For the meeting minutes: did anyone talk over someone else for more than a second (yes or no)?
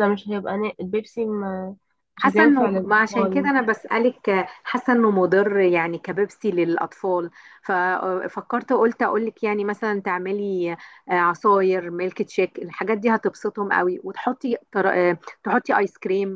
yes